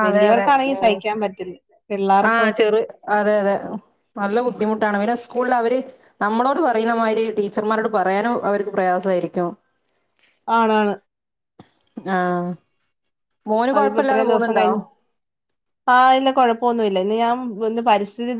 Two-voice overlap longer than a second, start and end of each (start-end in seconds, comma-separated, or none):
none